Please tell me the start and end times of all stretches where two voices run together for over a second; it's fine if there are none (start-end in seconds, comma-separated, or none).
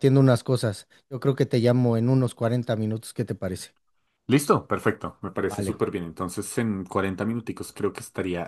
none